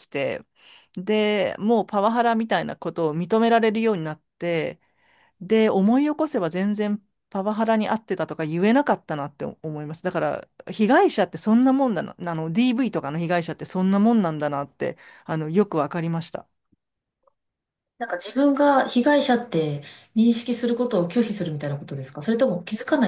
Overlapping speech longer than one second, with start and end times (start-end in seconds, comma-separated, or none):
none